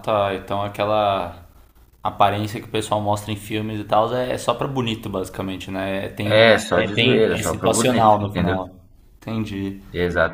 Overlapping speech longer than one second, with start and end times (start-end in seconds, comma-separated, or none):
6.4-8.6